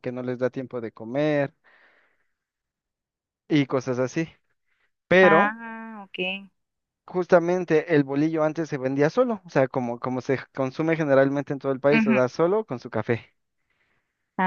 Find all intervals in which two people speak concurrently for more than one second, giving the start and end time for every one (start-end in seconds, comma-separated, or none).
none